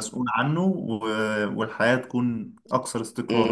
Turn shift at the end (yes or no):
yes